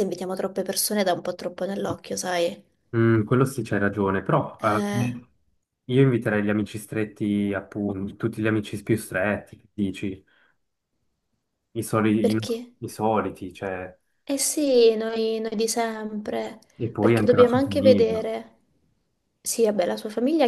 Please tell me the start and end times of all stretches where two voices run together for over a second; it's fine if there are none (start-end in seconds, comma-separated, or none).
17.0-18.3